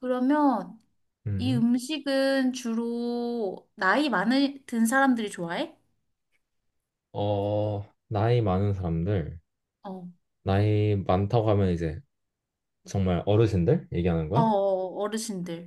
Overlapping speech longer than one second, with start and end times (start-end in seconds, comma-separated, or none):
none